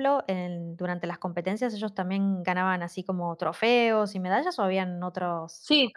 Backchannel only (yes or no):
no